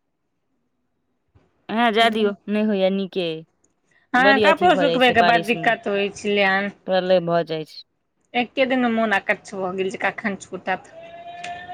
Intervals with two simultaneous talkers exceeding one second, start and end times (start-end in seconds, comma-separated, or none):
4.2-5.7